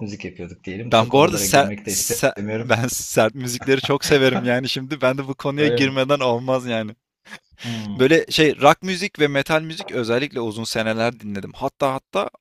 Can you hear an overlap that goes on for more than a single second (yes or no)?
yes